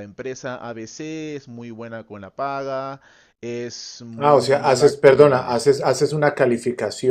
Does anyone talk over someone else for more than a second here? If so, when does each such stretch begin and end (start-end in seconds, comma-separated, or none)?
4.2-5.6